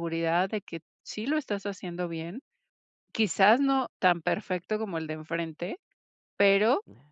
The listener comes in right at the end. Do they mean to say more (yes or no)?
no